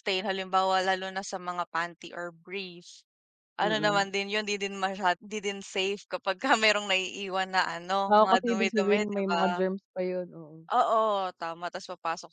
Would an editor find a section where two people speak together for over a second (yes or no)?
yes